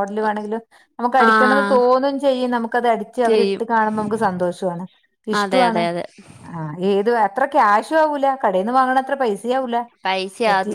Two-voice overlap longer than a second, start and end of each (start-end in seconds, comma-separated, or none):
none